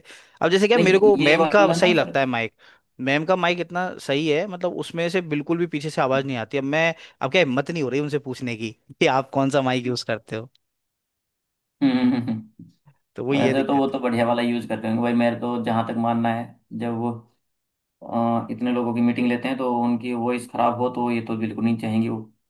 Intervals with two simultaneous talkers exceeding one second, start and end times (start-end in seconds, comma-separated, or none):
0.8-2.2